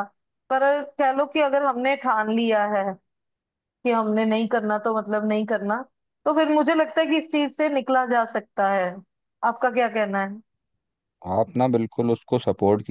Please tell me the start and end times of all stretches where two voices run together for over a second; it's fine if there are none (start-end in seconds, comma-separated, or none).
none